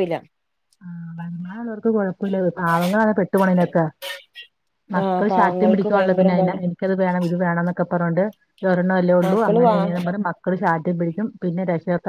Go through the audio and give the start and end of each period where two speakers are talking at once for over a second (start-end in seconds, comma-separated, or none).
5.0-6.6